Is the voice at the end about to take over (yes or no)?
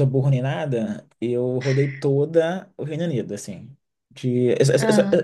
no